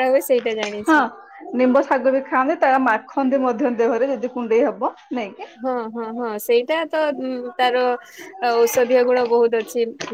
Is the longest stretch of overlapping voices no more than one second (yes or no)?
yes